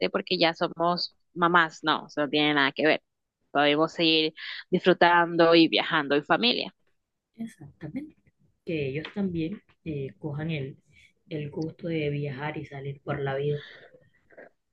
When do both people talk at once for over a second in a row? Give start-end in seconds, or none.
none